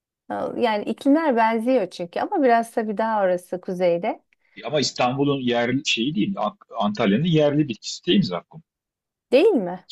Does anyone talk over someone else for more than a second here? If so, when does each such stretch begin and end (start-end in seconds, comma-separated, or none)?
none